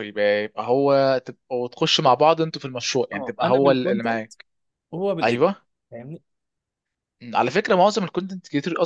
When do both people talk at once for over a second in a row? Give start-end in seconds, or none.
3.1-4.3